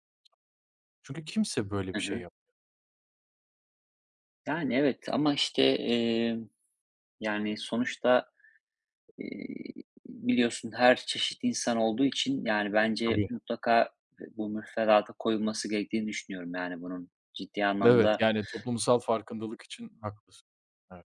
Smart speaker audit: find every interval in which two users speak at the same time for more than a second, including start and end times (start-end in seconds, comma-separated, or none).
none